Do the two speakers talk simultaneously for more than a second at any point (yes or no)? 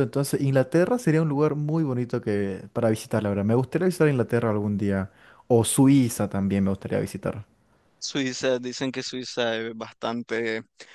no